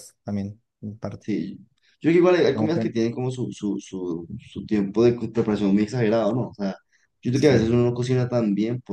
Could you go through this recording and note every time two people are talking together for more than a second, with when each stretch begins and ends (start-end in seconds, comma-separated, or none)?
none